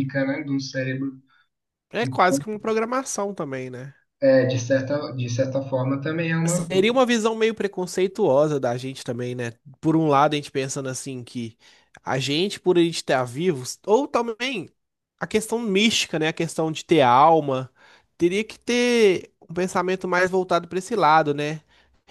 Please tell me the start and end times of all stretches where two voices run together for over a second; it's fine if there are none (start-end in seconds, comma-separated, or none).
none